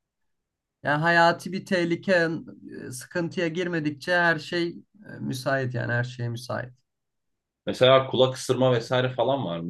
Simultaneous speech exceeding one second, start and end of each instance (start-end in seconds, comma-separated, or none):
none